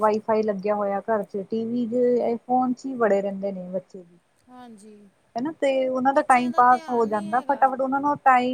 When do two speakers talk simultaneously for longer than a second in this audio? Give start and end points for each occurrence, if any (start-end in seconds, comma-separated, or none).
6.1-7.7